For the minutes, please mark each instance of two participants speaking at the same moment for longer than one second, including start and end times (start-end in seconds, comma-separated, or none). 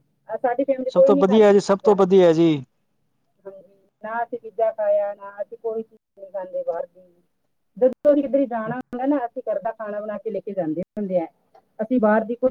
0.9-2.2